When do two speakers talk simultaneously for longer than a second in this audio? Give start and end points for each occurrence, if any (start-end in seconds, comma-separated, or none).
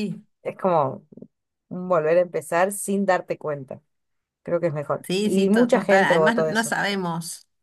5.1-6.8